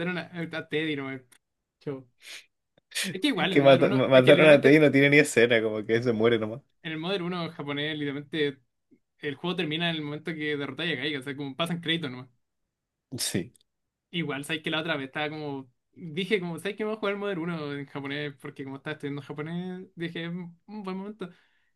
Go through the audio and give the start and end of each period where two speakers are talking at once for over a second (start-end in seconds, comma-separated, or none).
3.5-4.8